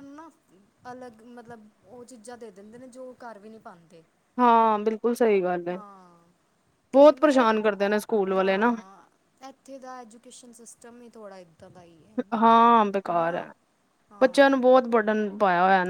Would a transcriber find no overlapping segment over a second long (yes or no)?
no